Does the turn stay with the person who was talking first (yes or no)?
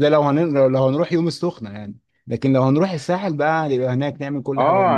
no